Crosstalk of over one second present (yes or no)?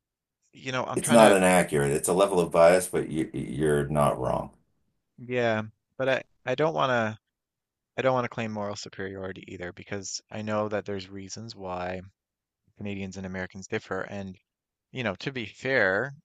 no